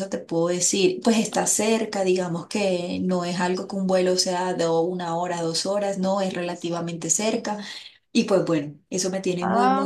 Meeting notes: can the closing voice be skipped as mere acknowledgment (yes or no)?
no